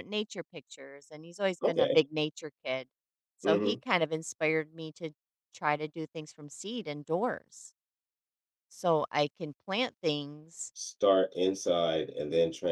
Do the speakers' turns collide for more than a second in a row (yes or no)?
no